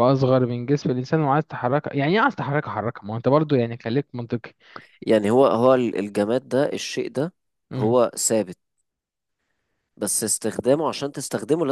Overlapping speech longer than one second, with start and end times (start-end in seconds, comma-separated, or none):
none